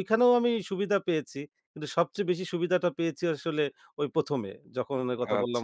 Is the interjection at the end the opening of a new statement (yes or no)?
yes